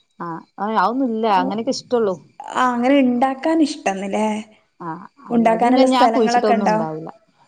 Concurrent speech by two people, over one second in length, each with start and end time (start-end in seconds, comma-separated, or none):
5.3-6.8